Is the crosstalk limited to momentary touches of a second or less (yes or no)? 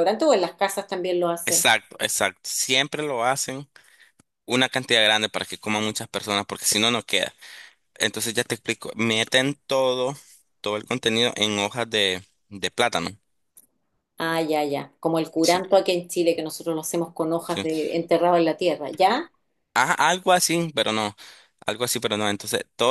yes